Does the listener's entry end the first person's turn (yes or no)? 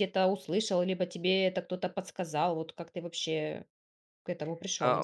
yes